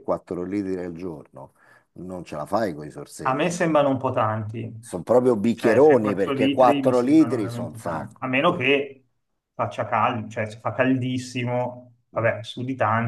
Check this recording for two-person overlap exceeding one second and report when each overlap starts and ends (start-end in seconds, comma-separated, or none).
5.5-8.6